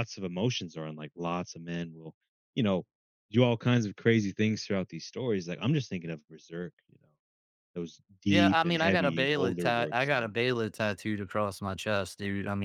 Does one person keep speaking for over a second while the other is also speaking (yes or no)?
yes